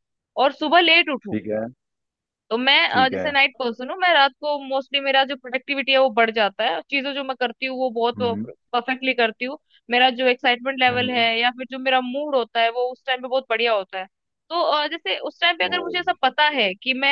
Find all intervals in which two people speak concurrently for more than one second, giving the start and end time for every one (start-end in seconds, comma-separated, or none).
none